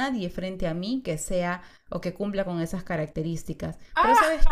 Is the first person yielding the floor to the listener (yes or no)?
no